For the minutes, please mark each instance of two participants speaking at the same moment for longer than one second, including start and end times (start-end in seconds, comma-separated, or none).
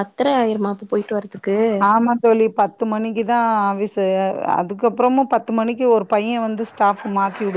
none